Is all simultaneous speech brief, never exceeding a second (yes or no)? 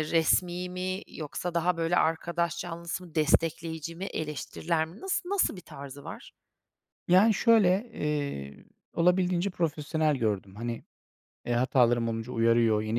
yes